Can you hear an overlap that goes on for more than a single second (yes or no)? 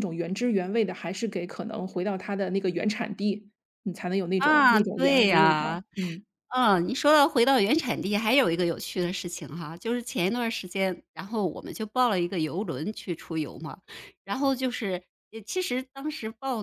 yes